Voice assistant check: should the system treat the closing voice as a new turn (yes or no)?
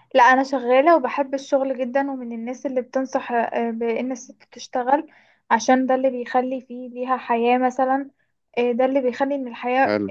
no